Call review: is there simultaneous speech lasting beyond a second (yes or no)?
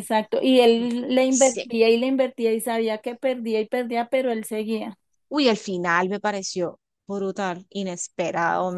no